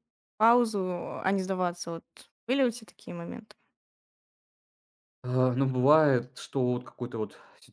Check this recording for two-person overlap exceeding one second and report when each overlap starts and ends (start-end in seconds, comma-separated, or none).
none